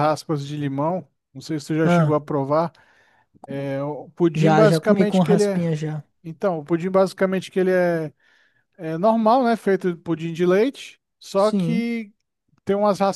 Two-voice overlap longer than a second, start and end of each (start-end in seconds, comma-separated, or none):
4.3-5.7